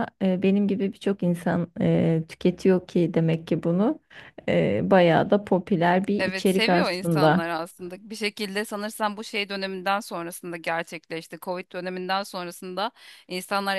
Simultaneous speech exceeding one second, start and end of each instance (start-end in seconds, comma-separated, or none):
6.2-7.4